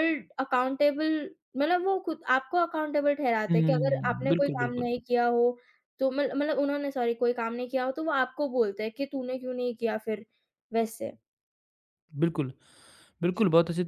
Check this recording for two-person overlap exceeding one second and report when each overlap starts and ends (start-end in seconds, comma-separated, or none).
3.5-4.8